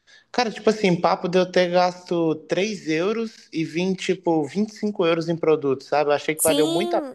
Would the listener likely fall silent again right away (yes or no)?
no